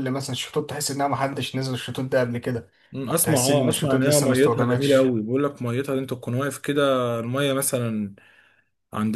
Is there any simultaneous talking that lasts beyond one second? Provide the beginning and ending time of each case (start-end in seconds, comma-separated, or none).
3.1-5.2